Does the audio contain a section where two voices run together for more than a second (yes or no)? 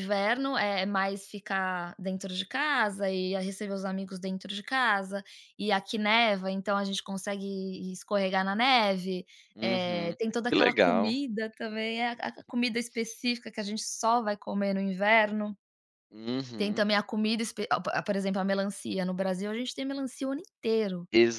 yes